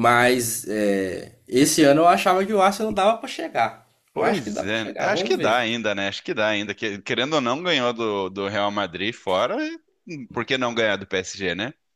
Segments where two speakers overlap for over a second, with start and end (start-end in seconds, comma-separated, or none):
4.1-5.5